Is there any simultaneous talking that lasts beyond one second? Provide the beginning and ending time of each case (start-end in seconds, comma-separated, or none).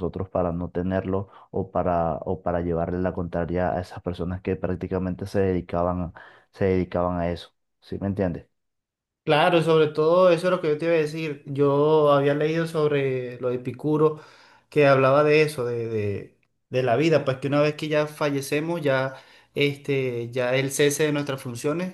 none